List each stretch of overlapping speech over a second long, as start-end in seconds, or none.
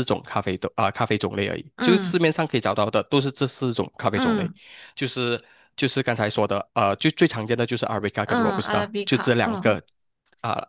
8.2-9.8